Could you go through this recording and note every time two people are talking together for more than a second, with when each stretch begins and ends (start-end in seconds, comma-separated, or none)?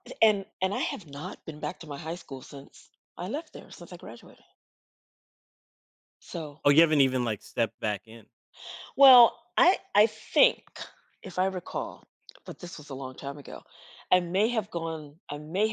none